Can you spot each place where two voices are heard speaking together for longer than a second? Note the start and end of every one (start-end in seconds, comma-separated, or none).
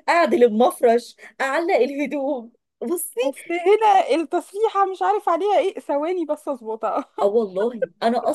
none